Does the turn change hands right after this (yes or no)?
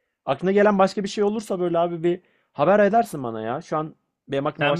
yes